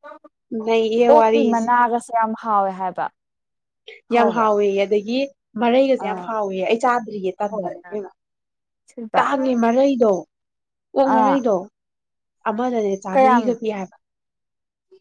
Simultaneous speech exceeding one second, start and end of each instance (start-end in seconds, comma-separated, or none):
none